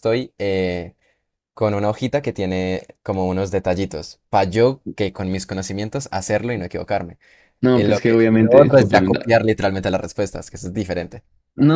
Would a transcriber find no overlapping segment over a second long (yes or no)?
no